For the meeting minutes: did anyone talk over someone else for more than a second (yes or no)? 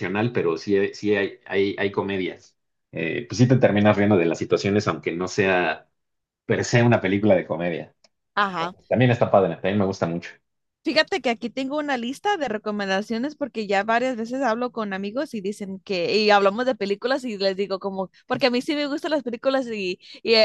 no